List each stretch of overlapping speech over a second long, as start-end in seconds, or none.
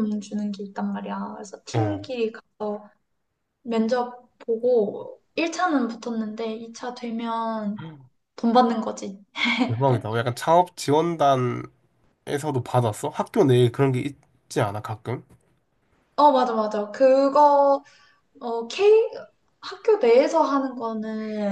none